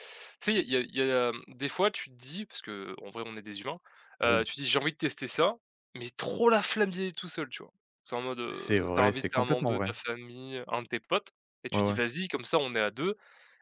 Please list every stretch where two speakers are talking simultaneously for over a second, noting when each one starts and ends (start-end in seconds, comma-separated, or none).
8.1-10.0